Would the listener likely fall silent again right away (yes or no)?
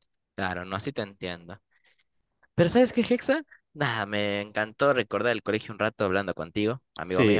no